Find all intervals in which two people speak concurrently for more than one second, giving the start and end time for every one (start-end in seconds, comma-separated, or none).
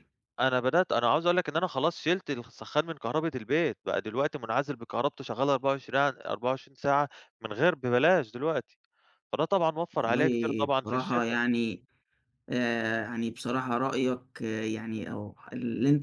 9.9-11.4